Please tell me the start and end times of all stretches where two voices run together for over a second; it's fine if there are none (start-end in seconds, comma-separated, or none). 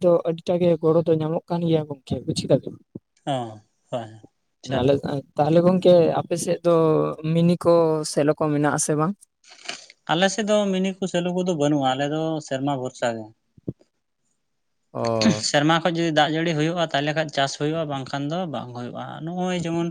none